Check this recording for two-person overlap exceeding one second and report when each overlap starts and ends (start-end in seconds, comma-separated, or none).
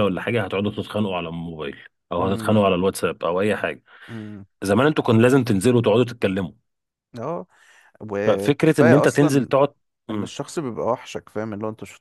8.3-9.5